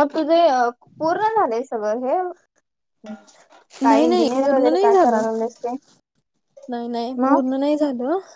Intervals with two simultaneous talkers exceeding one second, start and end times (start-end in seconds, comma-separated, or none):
3.9-5.2